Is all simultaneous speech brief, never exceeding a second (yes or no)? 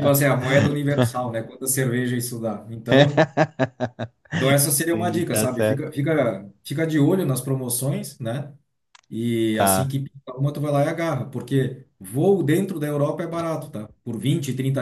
no